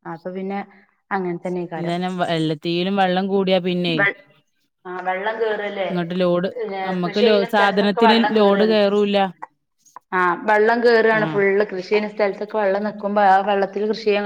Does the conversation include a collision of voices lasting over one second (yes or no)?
yes